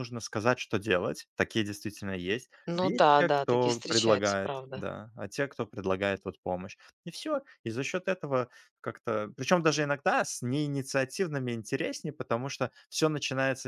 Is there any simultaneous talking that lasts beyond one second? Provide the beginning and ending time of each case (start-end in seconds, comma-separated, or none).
2.7-4.9